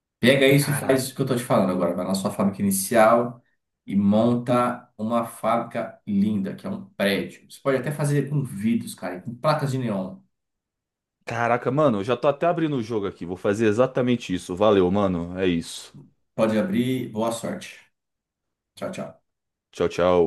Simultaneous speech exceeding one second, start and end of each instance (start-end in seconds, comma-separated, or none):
none